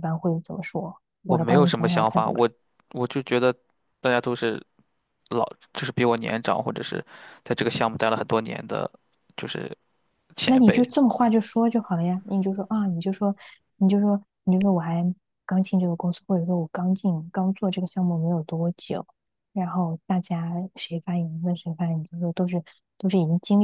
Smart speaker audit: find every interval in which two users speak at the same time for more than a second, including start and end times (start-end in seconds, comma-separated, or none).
1.2-2.5